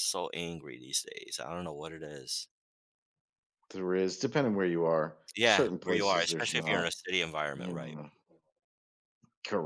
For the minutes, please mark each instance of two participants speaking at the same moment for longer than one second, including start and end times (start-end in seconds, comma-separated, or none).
5.3-6.9